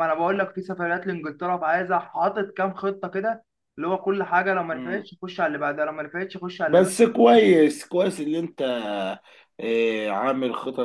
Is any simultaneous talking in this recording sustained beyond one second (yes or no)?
no